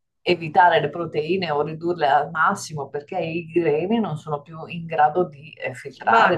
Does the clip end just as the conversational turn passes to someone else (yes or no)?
yes